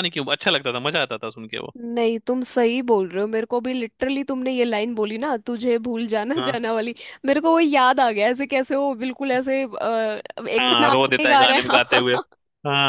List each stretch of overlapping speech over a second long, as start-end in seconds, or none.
10.6-12.2